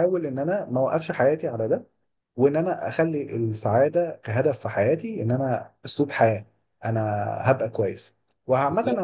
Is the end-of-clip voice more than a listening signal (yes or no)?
no